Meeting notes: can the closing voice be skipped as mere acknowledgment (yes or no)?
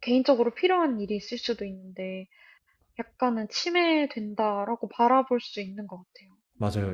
no